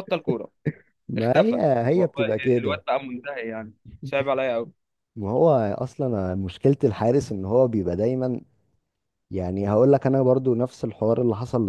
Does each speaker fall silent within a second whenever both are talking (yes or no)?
no